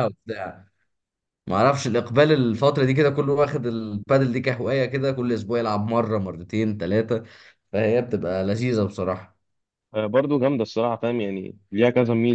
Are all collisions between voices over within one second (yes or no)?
yes